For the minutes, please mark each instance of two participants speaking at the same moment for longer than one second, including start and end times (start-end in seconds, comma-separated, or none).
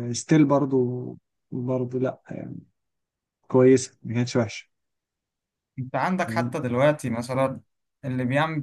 none